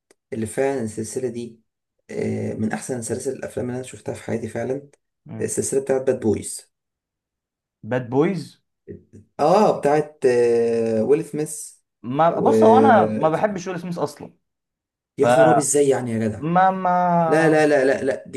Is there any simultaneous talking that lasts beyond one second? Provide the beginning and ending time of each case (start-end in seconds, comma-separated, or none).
none